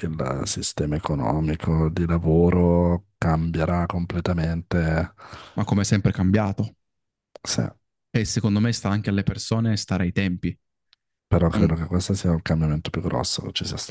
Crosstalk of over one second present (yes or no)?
no